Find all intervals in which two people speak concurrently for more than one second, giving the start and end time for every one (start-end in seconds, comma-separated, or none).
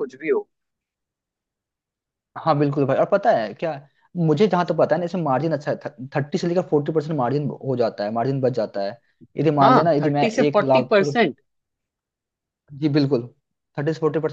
9.6-11.2